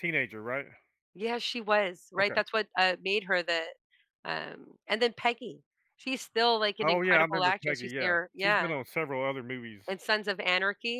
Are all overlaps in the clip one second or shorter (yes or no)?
no